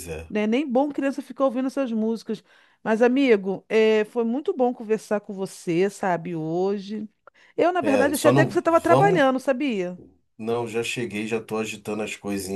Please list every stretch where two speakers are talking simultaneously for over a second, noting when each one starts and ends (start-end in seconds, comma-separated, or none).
7.8-9.2